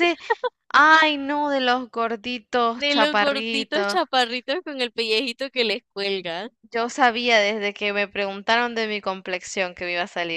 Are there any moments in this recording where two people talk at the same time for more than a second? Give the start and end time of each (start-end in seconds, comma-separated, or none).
2.8-4.0